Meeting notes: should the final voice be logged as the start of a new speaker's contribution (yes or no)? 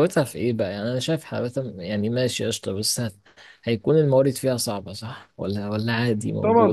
yes